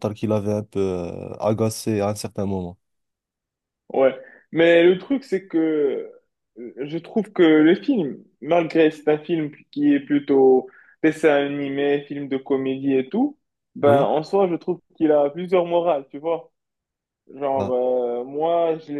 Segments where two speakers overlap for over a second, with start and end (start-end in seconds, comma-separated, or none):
none